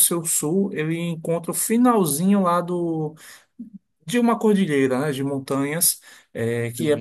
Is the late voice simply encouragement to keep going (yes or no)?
yes